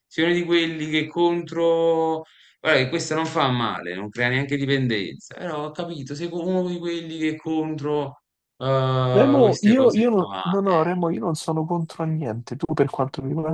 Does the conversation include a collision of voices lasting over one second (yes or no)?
yes